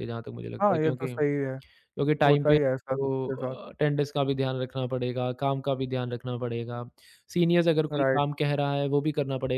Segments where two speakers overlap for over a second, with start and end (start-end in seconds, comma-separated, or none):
2.3-3.6